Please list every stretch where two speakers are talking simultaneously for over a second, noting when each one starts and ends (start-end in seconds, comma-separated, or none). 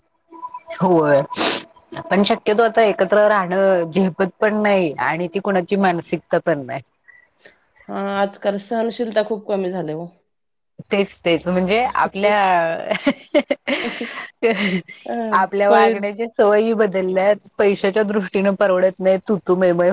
none